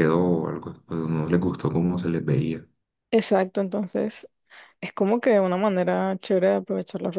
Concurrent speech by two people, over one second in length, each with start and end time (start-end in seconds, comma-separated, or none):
none